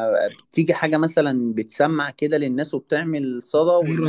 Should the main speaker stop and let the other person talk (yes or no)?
no